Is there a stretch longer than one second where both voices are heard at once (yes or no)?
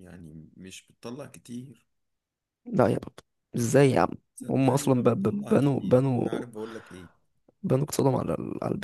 yes